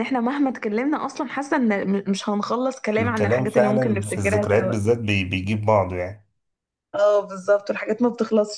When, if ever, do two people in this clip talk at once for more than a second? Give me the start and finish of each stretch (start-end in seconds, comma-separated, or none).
3.0-4.8